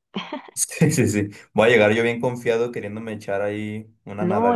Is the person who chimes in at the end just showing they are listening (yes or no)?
no